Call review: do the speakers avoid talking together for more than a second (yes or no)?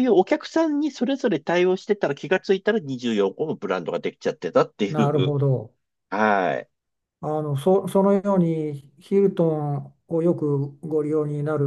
yes